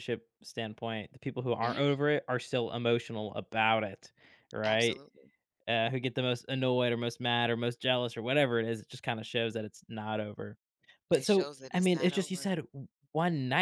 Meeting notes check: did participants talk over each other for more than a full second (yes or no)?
yes